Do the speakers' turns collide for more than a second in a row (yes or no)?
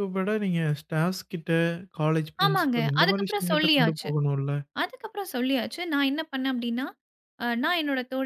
yes